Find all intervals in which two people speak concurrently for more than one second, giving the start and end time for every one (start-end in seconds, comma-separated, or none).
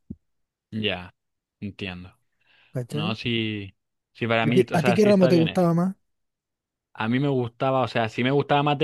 4.4-5.7